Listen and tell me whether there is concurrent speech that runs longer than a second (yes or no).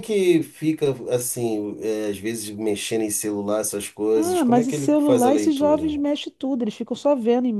yes